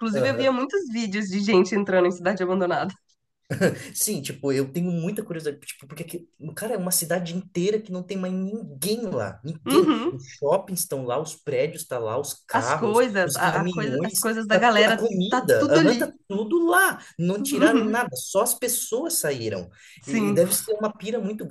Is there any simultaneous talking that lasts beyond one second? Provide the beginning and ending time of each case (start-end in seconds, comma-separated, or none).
12.5-16.1